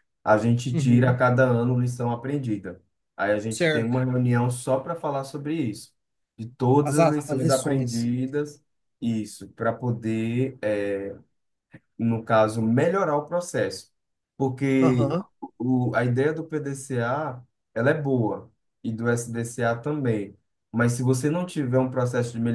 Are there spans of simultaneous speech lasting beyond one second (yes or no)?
yes